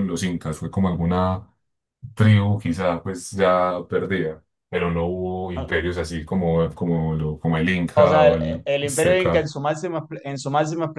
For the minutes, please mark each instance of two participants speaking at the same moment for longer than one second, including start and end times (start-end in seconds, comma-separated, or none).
7.9-9.5